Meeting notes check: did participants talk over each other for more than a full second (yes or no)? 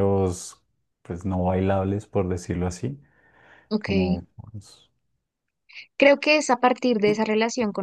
no